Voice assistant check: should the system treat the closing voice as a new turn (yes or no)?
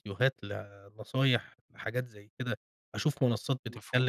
no